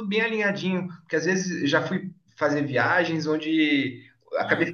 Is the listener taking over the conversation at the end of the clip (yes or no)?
no